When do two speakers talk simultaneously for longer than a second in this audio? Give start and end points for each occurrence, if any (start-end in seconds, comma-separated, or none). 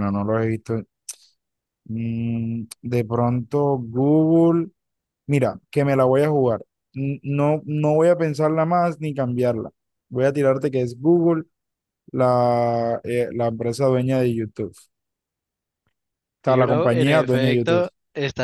16.4-17.9